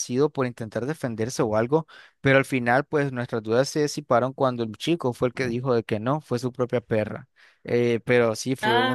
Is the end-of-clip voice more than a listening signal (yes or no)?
no